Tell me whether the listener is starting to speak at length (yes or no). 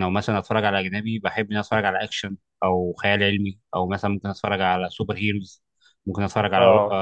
no